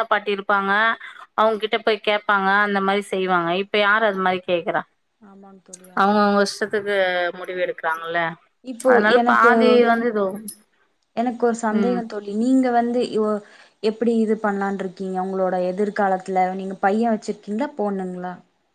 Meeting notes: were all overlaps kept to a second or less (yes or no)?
yes